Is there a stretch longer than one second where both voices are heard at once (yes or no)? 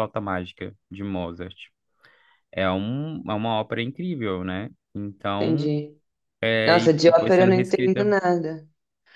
yes